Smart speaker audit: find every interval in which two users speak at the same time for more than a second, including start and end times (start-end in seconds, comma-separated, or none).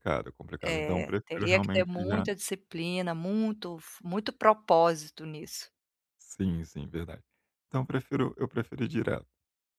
0.6-2.2